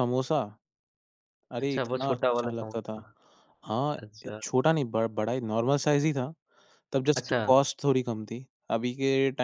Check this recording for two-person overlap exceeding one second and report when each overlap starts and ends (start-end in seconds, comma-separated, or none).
1.6-3.0